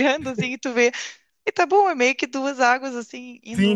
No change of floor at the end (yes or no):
no